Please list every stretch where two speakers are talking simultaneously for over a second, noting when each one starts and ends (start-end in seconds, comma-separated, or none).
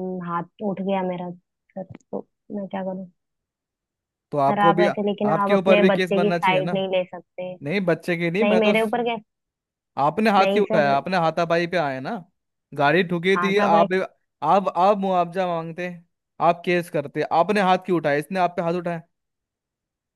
4.5-6.8